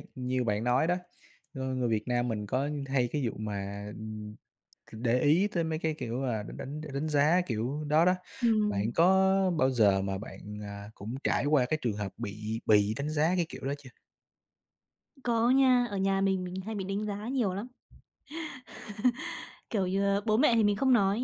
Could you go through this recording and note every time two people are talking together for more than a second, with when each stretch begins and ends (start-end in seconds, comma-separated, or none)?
none